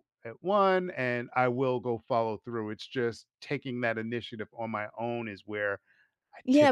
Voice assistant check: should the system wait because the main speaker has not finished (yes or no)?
no